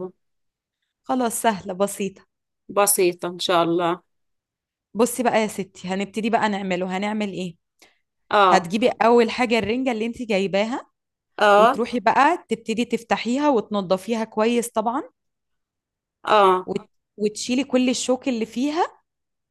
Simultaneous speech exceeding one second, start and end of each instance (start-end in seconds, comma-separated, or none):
none